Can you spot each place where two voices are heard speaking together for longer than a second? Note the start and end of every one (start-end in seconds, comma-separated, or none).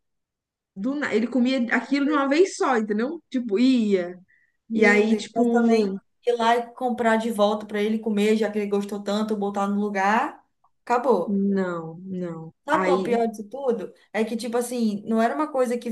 4.7-6.0